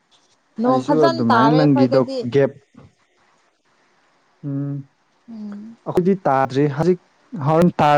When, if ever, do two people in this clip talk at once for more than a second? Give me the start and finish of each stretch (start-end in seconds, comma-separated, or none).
0.7-2.2